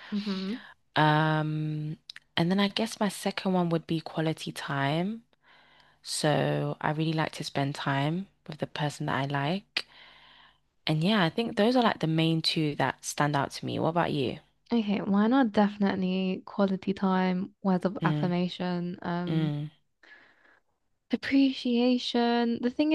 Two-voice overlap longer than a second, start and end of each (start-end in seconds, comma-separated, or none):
none